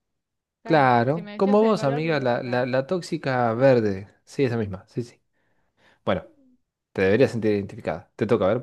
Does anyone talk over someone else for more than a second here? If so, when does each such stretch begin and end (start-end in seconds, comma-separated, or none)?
0.6-2.7